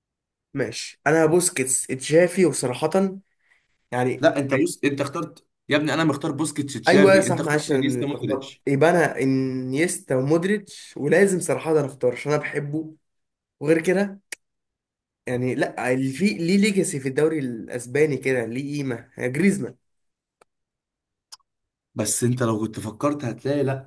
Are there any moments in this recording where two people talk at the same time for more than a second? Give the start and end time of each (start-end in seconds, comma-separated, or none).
6.9-8.6